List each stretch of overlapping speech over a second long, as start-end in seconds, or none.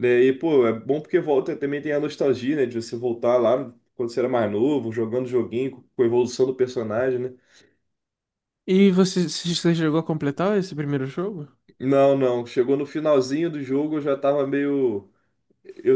none